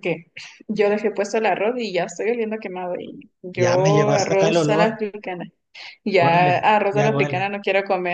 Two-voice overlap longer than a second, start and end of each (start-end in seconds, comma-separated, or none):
3.5-5.0, 6.2-7.5